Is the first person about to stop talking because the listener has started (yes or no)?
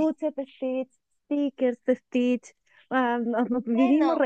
no